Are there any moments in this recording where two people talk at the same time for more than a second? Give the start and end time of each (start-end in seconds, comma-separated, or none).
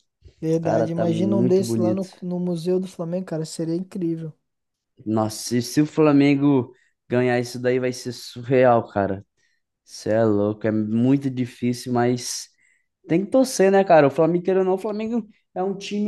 0.6-2.1